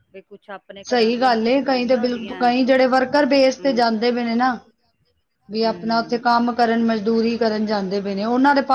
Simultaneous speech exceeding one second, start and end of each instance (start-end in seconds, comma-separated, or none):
0.9-2.5